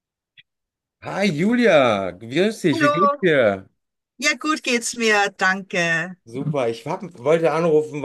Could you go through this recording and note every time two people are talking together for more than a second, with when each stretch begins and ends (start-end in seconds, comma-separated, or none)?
none